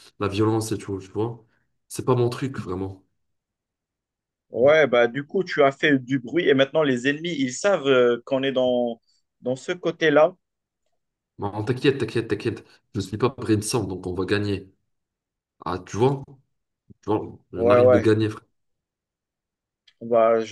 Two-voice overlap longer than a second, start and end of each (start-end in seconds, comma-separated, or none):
none